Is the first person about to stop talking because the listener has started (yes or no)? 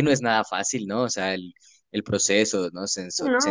yes